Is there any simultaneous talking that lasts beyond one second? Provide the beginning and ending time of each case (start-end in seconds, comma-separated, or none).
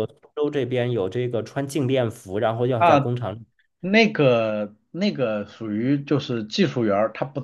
none